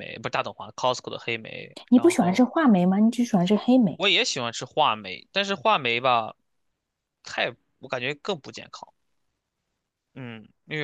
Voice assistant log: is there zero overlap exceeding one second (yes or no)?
yes